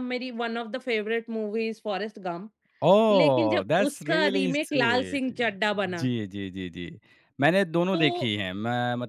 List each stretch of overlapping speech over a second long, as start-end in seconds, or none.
3.1-5.3